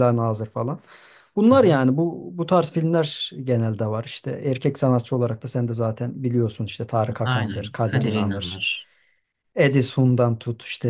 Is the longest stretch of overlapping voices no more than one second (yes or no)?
no